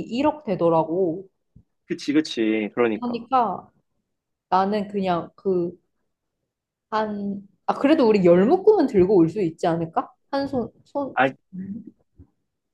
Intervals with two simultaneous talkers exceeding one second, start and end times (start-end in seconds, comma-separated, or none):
none